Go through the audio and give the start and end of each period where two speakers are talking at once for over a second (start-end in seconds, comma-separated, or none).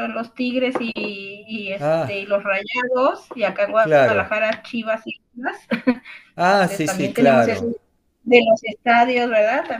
6.4-7.7